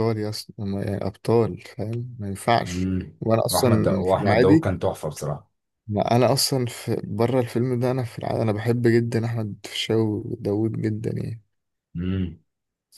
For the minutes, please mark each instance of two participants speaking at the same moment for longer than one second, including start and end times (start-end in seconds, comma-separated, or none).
2.7-4.7